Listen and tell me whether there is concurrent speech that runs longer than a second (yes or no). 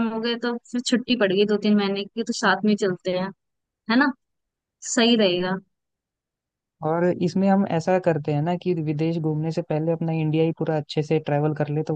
no